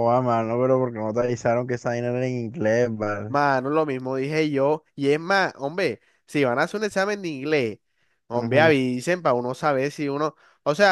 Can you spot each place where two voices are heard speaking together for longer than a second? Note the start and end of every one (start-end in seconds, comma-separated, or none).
none